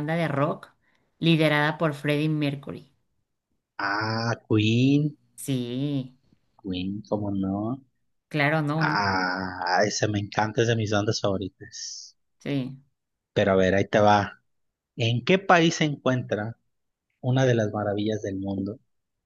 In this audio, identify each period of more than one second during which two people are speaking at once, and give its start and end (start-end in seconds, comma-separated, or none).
none